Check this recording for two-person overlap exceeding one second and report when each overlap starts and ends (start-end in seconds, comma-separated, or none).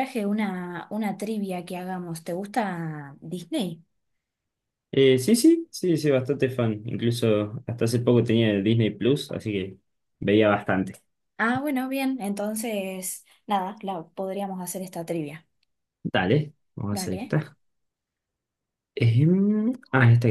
none